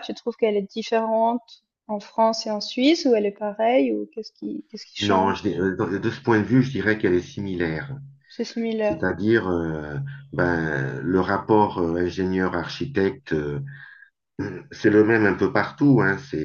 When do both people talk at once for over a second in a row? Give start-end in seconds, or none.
none